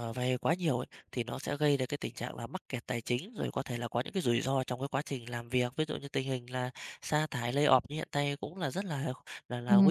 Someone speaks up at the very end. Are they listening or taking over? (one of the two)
taking over